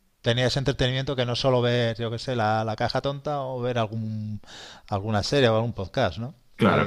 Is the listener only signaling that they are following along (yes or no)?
no